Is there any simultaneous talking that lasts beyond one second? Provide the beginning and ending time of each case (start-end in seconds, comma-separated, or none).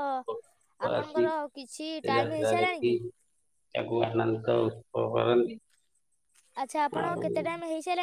0.9-3.0